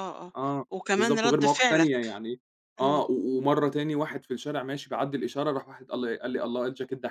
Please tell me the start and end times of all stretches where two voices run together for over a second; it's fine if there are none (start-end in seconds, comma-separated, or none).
0.7-2.2